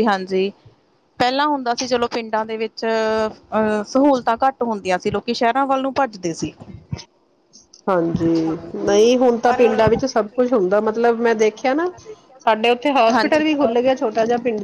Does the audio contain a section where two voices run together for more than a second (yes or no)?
yes